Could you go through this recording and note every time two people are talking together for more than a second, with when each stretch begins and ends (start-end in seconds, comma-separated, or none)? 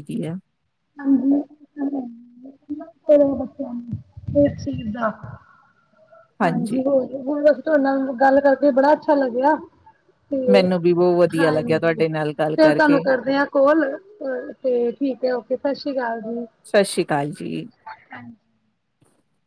11.4-13.0